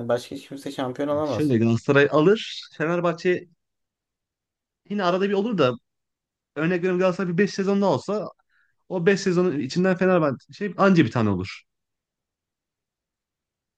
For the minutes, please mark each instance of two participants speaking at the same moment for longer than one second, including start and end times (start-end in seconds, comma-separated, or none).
none